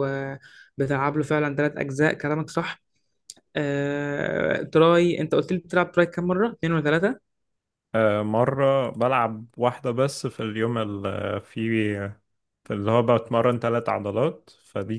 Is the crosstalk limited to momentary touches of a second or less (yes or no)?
yes